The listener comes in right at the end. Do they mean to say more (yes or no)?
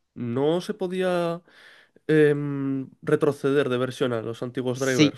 yes